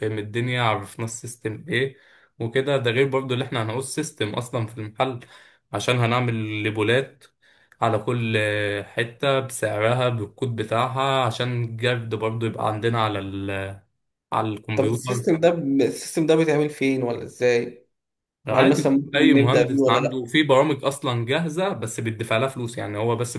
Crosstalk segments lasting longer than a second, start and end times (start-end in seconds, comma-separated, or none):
18.5-20.3